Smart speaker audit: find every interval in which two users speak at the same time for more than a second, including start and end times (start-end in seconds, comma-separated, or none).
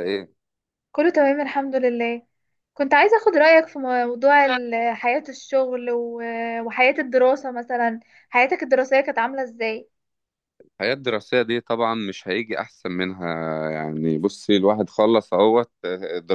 none